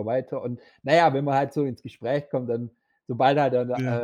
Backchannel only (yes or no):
yes